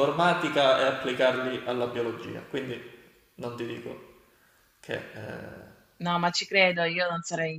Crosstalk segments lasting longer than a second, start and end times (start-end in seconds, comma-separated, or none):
none